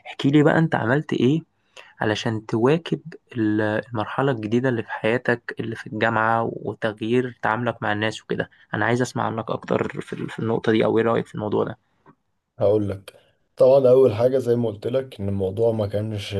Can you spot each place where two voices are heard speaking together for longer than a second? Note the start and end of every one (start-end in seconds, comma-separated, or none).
none